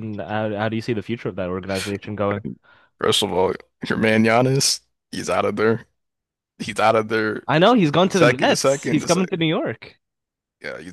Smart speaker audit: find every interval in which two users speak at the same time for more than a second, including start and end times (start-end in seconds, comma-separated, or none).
8.1-9.3